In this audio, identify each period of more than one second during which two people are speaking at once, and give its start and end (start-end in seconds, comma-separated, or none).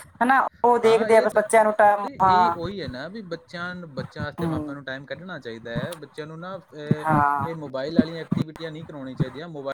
0.8-2.5